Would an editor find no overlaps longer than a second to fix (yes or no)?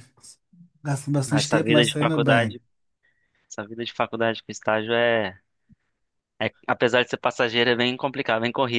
no